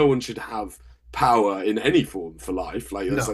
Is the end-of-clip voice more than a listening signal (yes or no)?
no